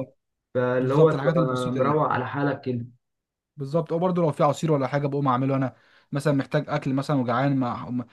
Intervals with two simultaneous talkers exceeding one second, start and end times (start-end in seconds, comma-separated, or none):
0.8-2.0